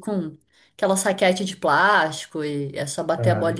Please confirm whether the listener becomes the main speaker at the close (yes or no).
no